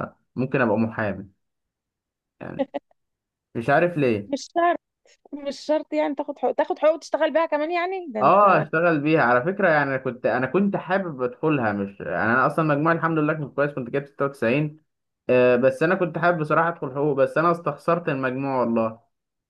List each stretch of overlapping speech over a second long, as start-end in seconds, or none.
none